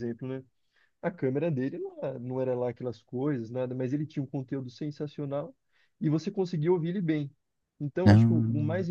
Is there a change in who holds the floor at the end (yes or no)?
no